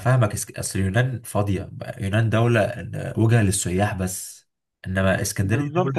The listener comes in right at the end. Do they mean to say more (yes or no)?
yes